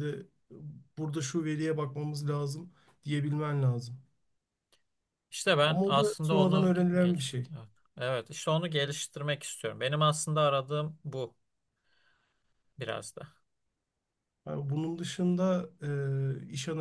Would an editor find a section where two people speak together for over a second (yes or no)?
yes